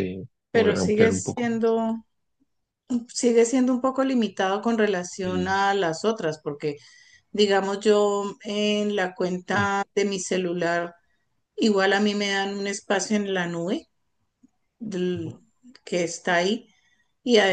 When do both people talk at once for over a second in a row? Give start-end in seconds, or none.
0.5-1.8